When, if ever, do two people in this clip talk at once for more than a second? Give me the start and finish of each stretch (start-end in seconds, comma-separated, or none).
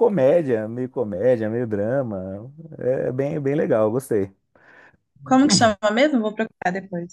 none